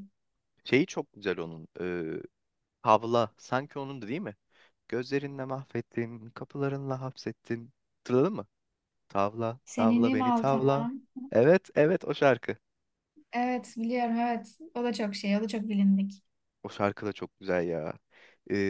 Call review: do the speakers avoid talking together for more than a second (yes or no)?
no